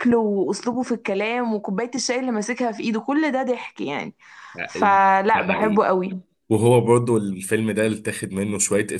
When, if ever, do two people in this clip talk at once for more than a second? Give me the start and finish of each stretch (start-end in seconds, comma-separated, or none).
none